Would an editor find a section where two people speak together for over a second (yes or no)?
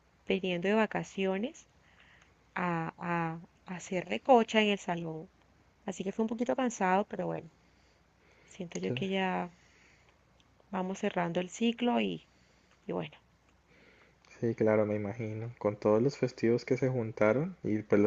no